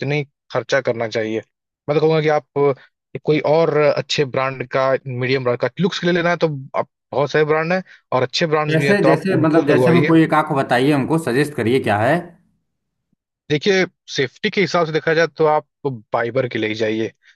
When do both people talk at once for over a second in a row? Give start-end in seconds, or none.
8.7-10.1